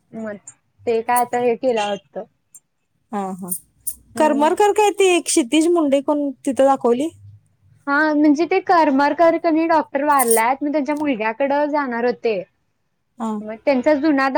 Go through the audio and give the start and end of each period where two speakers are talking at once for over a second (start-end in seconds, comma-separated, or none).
none